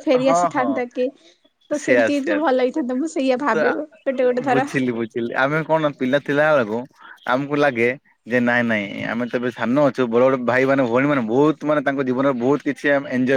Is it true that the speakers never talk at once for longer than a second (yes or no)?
no